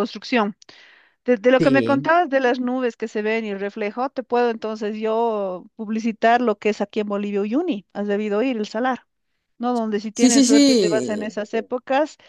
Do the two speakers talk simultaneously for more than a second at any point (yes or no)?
yes